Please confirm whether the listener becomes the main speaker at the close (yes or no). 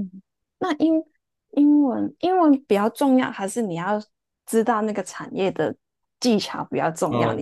yes